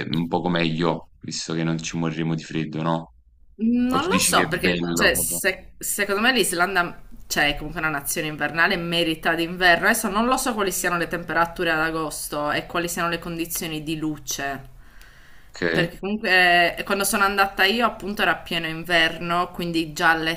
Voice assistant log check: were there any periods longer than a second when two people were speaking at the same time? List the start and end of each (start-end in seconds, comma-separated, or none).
3.9-5.1